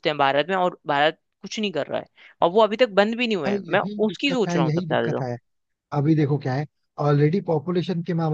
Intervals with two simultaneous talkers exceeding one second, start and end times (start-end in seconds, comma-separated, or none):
3.5-5.3